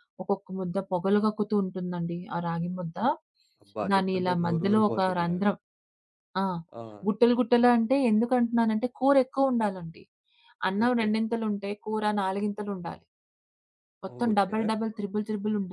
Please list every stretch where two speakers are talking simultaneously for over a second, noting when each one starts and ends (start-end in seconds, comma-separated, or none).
3.9-5.5